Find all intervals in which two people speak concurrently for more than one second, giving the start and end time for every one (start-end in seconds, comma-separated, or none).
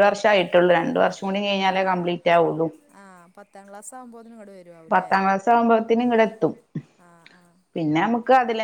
none